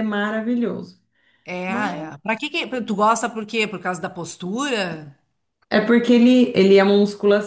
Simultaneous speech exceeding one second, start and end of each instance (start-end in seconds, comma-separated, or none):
none